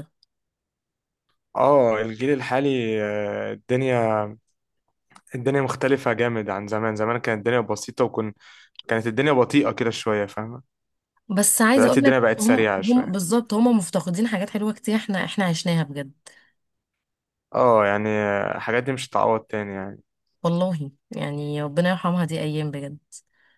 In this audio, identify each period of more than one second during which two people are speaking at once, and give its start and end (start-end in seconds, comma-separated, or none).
11.8-13.2